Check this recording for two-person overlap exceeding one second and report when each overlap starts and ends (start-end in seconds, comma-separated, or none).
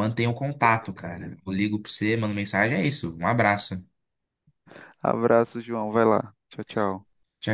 none